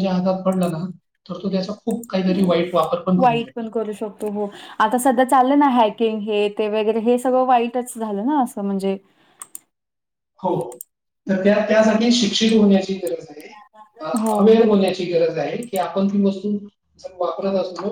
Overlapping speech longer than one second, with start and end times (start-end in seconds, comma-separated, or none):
none